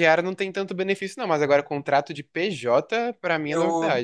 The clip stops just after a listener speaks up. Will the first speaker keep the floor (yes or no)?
no